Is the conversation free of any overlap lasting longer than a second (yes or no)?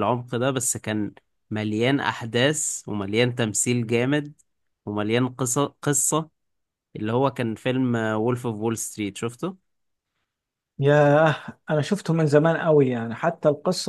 yes